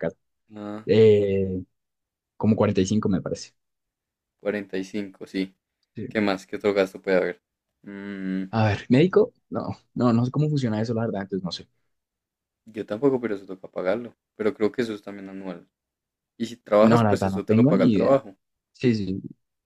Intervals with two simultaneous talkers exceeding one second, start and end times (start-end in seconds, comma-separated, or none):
16.8-18.2